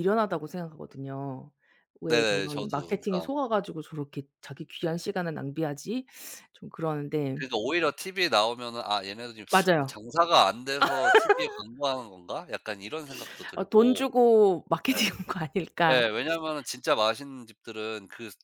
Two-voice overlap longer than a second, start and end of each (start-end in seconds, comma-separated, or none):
2.1-3.3